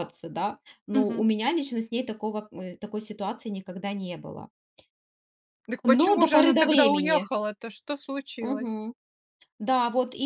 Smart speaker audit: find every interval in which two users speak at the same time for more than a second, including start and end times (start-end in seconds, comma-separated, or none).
6.0-7.3